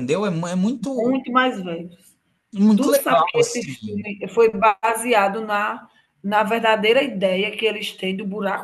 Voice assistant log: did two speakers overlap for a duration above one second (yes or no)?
yes